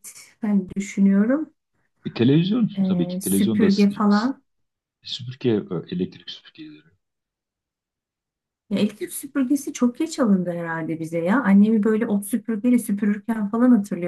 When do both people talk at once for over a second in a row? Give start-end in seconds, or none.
2.8-4.3